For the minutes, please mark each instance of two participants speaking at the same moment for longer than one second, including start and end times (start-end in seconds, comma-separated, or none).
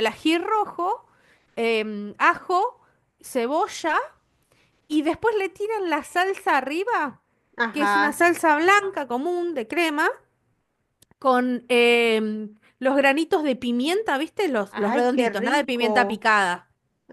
14.7-16.3